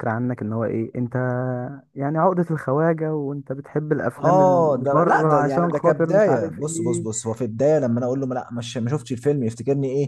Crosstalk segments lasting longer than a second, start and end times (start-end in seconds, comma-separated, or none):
4.2-7.1